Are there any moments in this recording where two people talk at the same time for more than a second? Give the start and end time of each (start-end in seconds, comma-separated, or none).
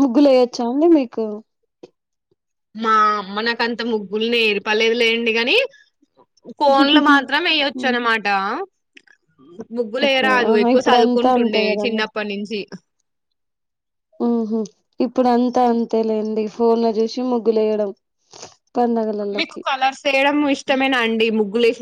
10.1-12.0